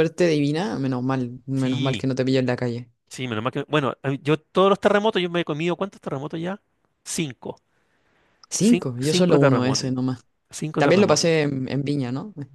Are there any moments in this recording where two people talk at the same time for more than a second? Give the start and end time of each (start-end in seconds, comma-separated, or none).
8.6-9.9